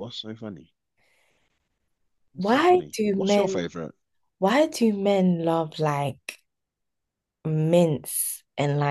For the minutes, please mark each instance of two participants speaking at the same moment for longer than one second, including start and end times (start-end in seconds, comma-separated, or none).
2.4-3.6